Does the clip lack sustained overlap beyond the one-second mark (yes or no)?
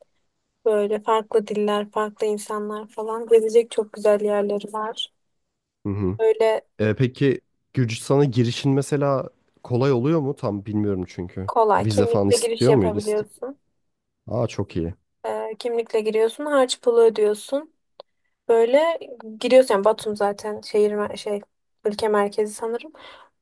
no